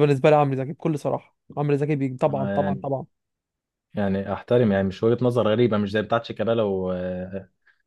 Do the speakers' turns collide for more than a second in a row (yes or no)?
no